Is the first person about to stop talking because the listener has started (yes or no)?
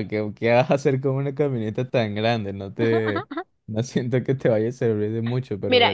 yes